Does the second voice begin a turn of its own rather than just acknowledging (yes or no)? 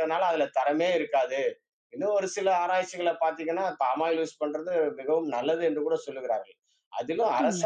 no